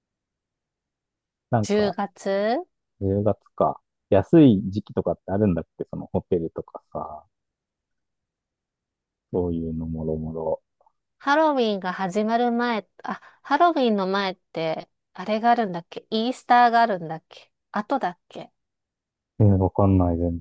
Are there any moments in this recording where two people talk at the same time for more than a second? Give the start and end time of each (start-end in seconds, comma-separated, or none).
none